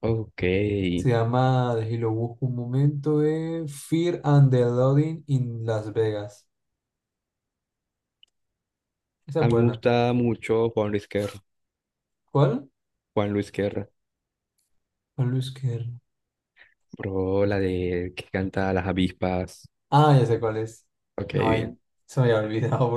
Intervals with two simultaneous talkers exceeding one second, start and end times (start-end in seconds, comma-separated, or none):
none